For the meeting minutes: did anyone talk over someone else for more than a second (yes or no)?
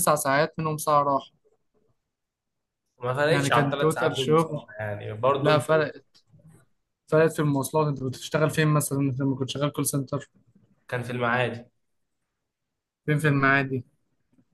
yes